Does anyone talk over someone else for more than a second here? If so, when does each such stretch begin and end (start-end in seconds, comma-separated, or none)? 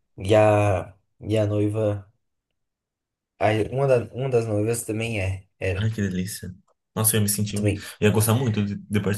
none